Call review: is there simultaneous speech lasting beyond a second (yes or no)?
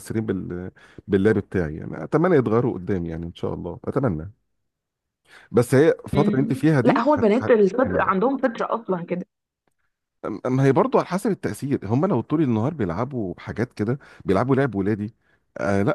yes